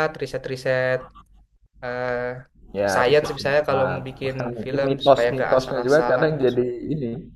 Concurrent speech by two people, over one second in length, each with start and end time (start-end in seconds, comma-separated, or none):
2.9-6.3